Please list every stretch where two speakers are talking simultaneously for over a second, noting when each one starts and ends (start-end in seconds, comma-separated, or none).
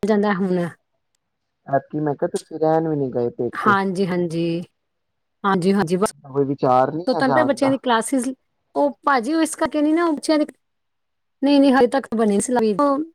none